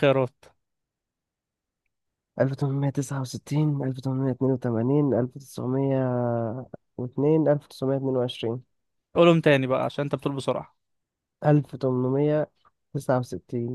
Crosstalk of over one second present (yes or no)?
no